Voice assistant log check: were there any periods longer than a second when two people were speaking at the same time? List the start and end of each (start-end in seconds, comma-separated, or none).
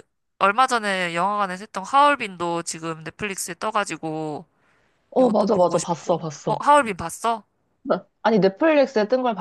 5.2-6.6